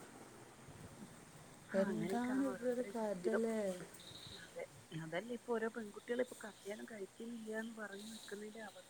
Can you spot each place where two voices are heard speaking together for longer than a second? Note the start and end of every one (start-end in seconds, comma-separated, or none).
1.8-3.4